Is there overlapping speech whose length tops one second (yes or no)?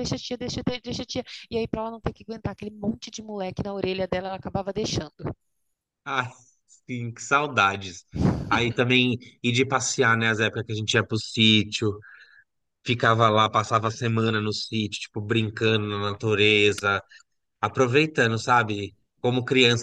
no